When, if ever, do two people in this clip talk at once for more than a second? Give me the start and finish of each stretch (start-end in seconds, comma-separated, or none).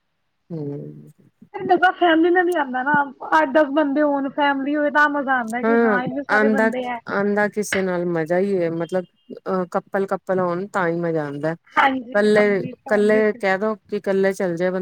11.8-13.4